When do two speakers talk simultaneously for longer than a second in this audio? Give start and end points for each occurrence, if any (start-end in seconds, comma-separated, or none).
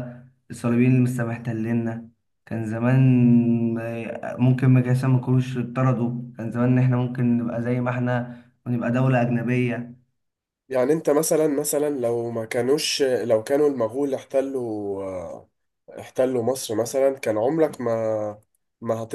none